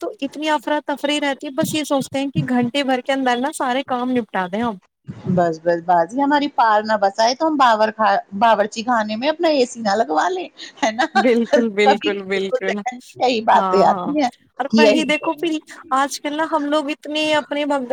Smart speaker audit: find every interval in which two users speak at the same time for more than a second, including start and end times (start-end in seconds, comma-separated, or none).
none